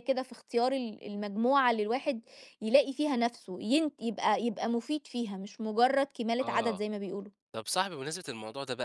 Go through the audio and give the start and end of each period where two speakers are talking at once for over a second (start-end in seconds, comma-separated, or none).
none